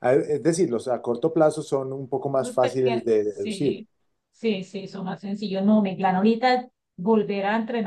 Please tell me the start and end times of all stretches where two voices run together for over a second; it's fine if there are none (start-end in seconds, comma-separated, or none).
2.4-3.8